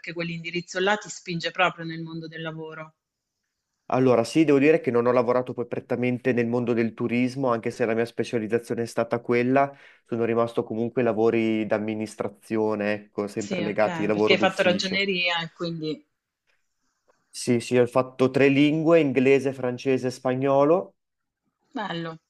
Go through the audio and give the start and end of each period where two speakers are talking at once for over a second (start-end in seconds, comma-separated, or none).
13.3-15.0